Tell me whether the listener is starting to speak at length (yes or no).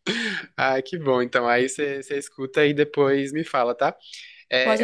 no